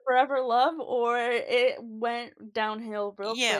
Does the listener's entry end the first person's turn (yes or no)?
yes